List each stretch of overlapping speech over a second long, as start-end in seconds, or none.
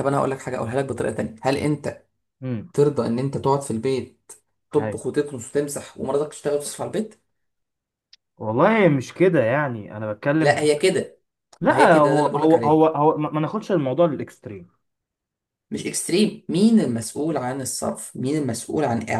11.7-12.9